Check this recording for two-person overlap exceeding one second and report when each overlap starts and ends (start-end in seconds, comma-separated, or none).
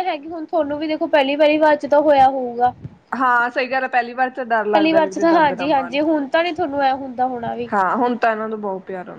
4.7-6.0